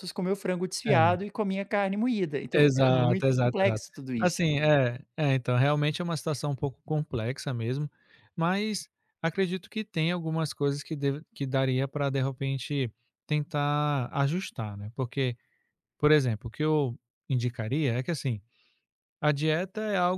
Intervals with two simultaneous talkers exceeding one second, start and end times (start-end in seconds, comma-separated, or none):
2.5-4.4